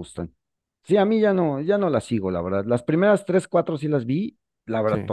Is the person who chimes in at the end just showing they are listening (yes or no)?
yes